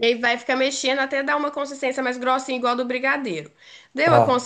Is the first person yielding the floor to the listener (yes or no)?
no